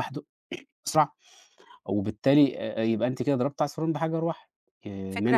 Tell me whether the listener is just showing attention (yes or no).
no